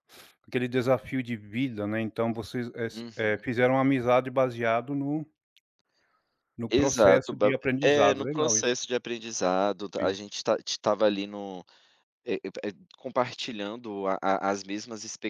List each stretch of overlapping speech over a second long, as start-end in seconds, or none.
6.7-8.8